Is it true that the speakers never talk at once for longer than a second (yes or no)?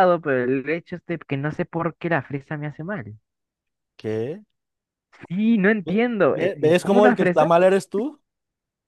no